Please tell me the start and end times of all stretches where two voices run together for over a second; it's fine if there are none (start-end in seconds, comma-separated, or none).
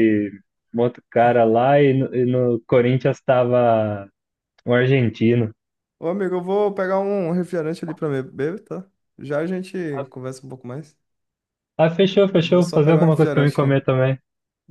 12.3-13.8